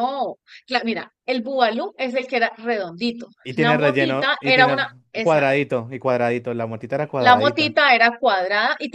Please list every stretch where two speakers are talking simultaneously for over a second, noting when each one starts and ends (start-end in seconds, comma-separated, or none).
3.4-5.5